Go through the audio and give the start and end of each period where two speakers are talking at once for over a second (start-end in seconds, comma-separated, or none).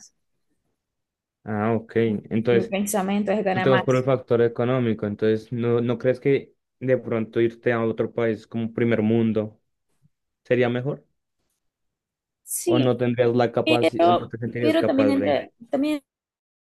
13.6-15.4